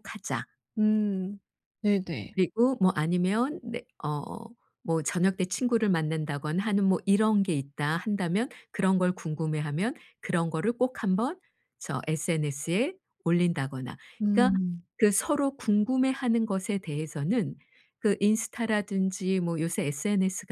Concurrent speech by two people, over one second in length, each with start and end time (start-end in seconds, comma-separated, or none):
none